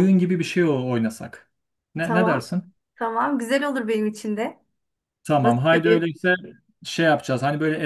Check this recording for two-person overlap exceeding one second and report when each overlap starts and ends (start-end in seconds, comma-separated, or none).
none